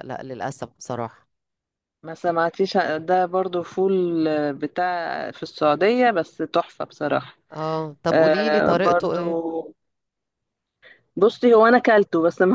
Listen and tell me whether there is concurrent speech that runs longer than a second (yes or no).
yes